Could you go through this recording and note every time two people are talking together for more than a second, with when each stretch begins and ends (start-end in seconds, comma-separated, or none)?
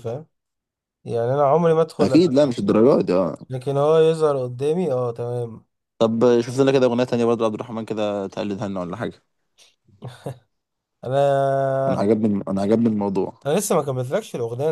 none